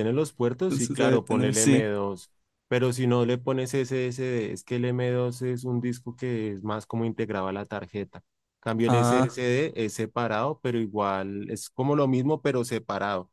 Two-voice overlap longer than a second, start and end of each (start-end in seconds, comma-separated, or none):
0.7-1.9